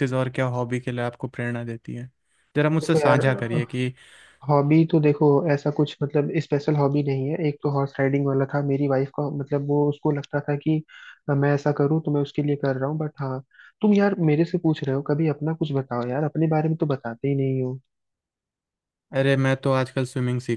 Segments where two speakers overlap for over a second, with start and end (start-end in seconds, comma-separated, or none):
none